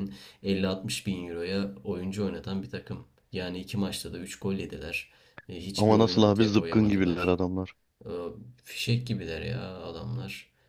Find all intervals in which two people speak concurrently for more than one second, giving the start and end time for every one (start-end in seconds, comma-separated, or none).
5.8-7.3